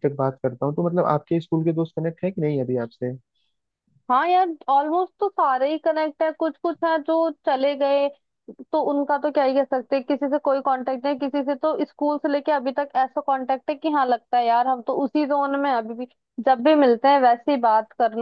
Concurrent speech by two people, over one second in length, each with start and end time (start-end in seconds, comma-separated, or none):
none